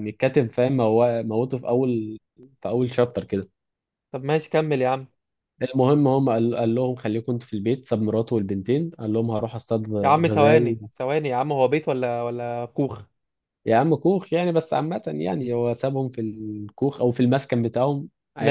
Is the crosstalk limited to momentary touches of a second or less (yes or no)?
yes